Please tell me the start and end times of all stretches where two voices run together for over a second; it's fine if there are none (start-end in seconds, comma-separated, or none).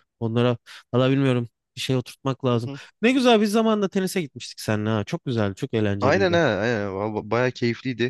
none